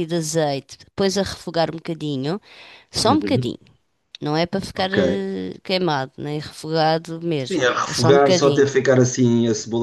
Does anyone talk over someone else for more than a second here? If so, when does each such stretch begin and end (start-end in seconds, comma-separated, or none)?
7.5-8.7